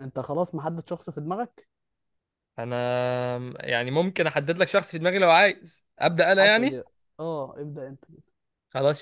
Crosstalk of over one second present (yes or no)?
no